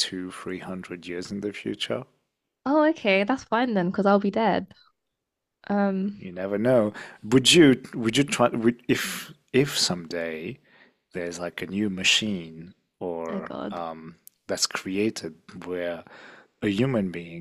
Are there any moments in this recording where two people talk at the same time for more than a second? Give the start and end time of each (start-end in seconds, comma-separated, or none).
none